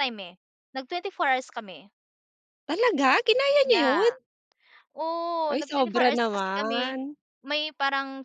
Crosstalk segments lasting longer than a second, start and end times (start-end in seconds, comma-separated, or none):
5.5-6.9